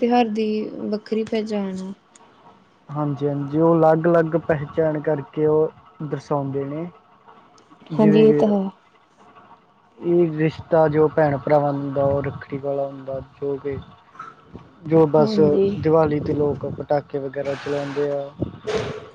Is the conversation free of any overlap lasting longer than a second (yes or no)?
yes